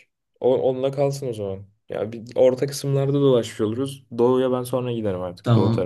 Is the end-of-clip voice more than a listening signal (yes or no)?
yes